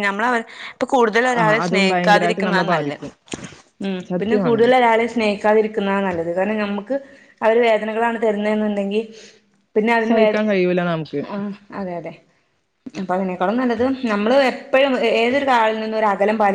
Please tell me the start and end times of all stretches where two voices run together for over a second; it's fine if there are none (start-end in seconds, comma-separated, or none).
1.4-3.0